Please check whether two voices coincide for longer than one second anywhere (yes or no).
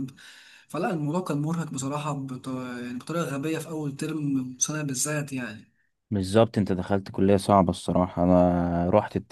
no